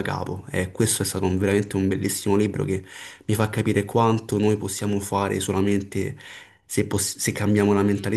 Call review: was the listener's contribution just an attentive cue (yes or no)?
no